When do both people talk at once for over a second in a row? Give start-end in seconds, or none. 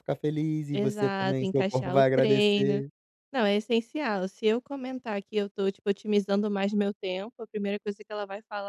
0.7-2.8